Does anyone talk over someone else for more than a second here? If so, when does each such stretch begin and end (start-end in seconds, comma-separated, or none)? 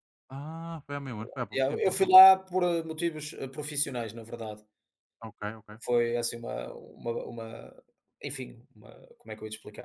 none